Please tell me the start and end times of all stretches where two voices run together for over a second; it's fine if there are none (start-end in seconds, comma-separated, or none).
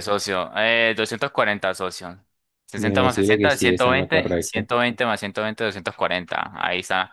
2.8-4.7